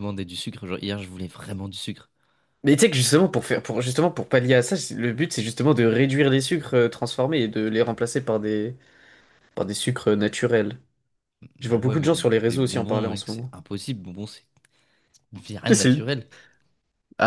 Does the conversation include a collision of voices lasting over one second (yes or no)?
yes